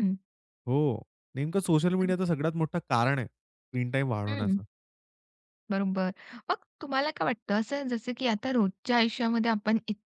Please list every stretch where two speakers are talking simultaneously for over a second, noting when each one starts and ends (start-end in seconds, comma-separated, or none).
none